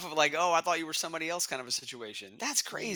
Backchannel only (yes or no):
no